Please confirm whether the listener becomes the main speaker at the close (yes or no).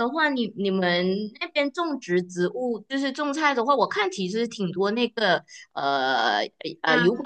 no